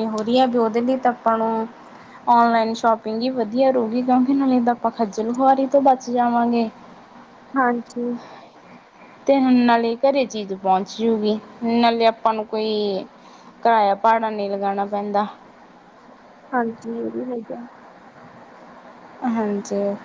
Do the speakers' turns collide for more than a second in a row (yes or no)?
no